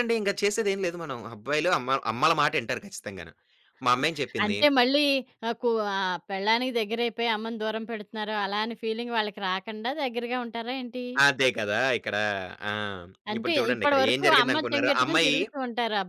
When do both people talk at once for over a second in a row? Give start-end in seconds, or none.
13.4-15.4